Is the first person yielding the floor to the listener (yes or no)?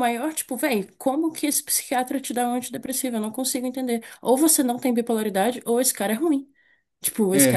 yes